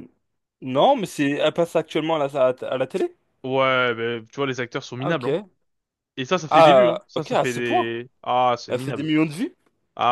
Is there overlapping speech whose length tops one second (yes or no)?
yes